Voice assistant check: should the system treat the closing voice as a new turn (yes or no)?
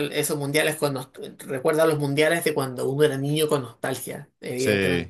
no